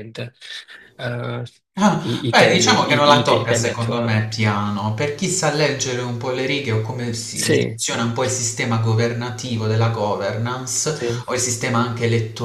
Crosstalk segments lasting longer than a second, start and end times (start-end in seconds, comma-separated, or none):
2.0-4.2